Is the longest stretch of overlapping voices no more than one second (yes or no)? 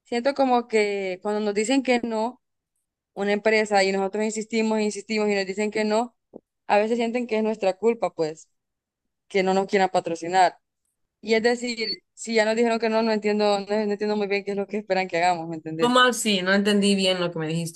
yes